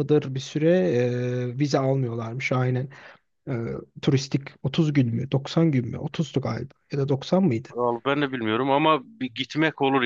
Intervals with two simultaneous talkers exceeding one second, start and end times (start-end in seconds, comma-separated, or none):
none